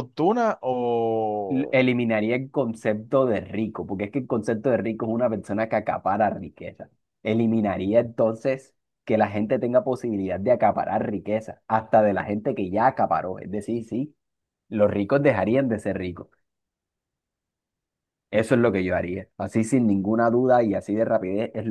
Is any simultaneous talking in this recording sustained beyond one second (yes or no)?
no